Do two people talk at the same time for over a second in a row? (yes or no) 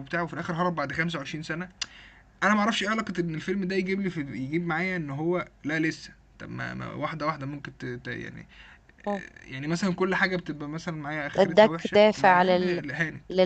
yes